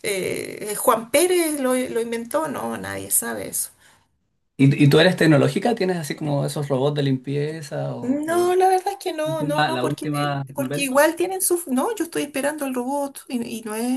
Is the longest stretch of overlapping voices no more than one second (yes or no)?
no